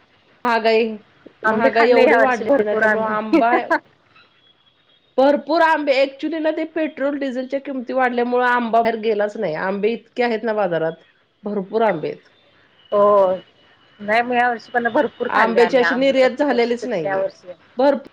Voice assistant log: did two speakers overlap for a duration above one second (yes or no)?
yes